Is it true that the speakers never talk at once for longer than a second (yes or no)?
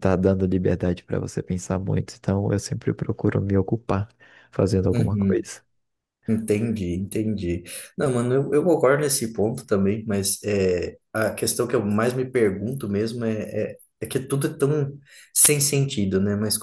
yes